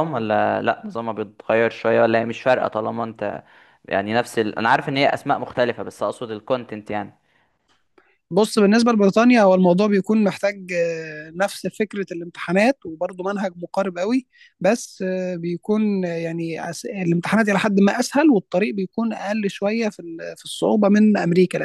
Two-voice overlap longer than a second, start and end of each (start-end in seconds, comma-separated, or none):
none